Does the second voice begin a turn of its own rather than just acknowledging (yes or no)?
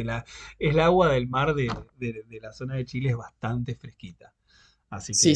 yes